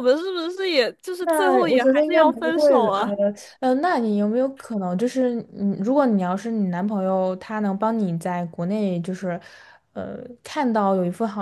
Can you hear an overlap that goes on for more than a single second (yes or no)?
yes